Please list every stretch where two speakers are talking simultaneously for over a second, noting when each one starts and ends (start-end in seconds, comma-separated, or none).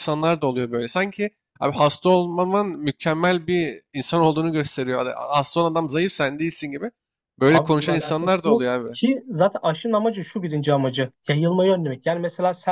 7.5-9.0